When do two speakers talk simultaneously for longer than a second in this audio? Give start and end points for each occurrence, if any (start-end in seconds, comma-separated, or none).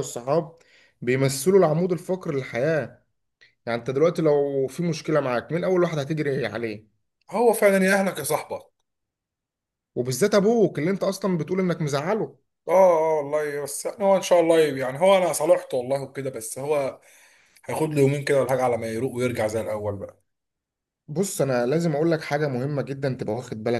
none